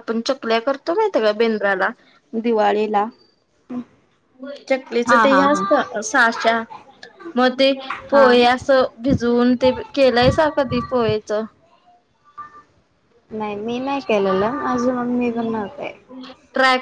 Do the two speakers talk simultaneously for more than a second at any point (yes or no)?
no